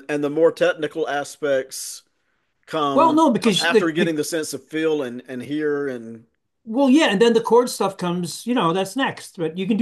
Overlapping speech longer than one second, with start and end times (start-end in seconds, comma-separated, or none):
2.9-4.2